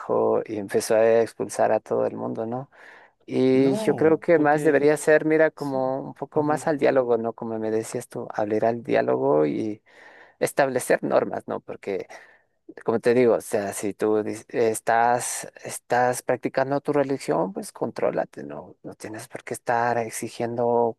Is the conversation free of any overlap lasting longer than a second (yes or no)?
no